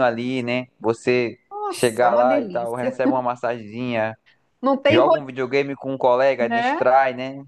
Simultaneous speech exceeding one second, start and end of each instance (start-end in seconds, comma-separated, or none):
1.5-3.0